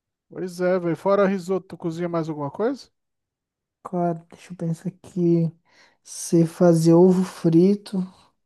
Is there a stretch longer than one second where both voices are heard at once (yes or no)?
no